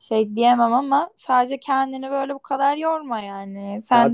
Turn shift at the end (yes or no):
no